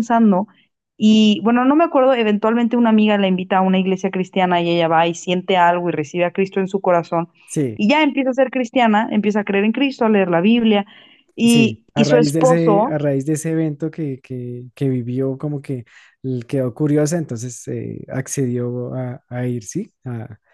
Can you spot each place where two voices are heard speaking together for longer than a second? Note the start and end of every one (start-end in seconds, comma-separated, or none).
11.4-12.9